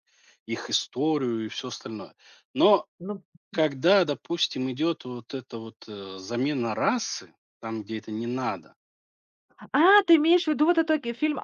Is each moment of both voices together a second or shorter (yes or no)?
yes